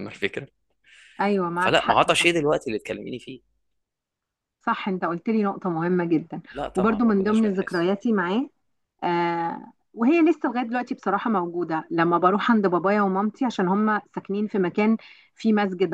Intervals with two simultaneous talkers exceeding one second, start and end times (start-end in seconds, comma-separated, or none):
6.5-7.9